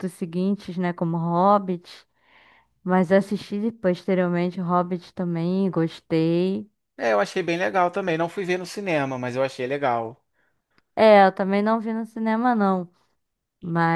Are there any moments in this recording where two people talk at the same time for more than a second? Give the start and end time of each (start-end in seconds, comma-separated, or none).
none